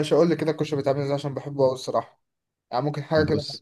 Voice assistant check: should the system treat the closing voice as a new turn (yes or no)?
no